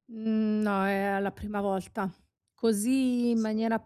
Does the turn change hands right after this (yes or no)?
no